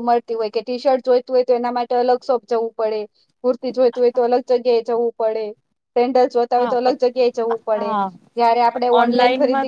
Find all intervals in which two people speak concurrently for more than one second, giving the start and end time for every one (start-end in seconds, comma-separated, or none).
6.6-7.9